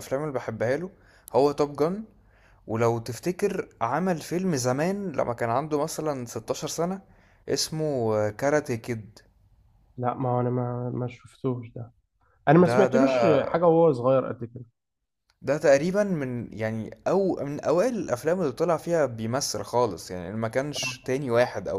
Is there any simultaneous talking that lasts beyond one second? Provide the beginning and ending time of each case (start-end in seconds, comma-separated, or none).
none